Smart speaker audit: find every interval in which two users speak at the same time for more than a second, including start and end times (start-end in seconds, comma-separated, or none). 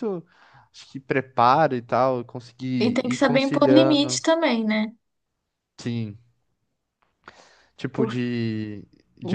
2.8-4.2